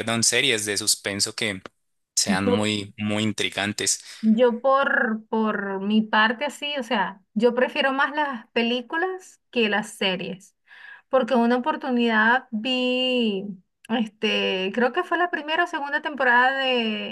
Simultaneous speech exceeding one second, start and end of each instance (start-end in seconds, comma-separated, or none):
none